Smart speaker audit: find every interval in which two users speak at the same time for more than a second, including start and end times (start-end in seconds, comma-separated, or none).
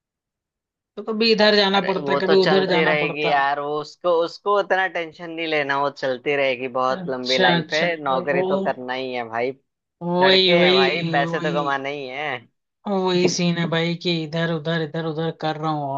1.7-3.5, 7.0-8.4, 10.2-11.8